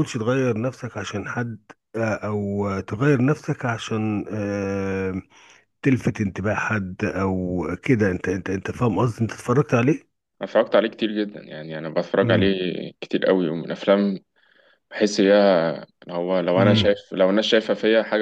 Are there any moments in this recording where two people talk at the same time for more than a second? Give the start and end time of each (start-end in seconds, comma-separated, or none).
none